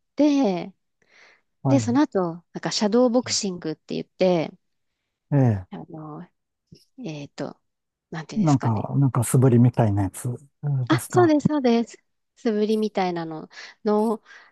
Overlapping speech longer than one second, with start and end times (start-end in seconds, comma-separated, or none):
none